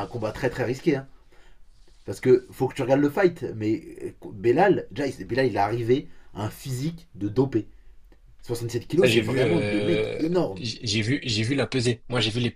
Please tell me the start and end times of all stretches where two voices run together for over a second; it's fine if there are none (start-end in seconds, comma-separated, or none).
8.9-10.6